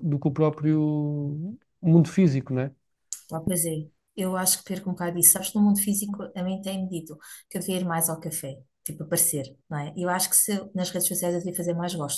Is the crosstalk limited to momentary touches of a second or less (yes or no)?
yes